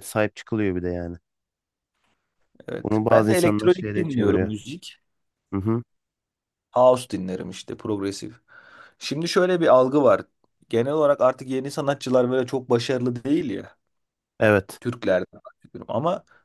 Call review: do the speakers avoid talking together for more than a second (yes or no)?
no